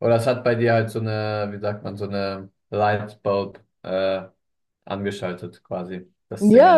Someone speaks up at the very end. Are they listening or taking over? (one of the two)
taking over